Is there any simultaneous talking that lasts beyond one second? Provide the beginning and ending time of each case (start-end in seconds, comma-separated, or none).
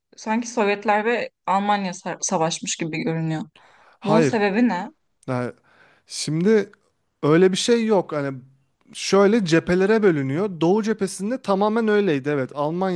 none